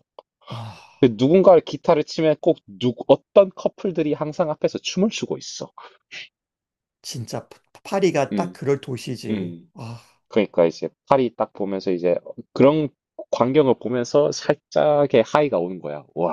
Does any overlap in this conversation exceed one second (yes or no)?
no